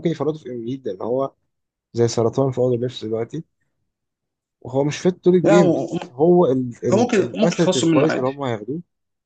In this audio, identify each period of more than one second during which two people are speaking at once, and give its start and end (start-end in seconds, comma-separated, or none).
6.9-8.3